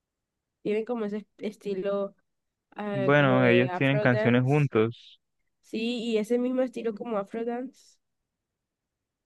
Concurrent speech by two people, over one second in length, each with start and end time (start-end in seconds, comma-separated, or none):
2.9-4.7